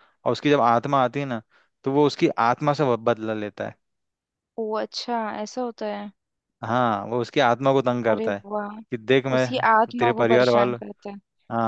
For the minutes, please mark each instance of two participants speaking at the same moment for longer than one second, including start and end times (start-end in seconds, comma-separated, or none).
9.3-10.8